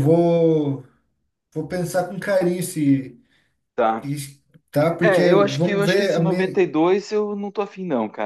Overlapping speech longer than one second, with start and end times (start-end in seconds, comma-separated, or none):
5.0-6.6